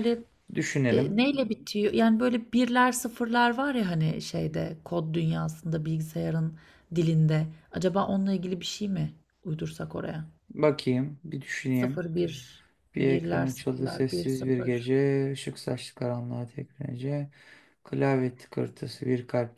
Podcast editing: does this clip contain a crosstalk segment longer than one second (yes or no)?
yes